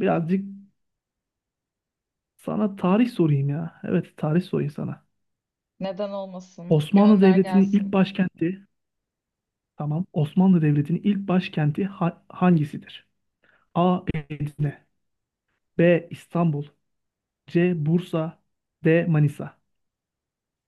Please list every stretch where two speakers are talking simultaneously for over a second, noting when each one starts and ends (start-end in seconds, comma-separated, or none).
6.7-8.0